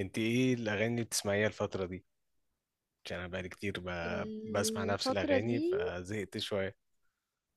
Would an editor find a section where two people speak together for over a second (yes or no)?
yes